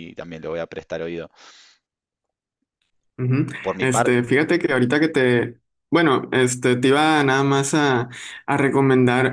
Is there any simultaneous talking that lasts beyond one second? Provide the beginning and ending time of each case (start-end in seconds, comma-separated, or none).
none